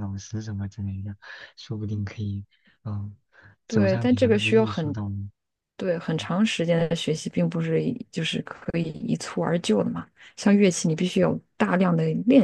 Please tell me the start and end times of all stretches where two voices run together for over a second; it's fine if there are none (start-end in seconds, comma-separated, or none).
3.7-5.0